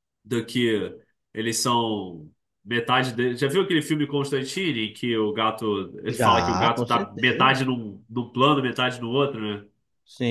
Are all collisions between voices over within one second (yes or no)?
no